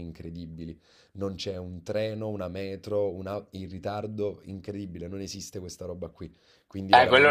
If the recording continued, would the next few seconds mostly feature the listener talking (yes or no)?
yes